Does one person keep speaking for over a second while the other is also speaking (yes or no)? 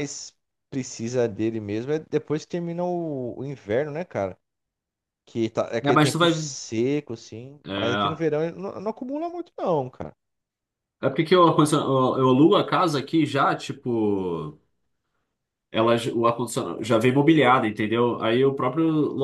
no